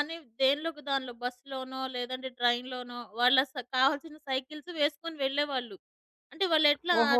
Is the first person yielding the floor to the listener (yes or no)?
yes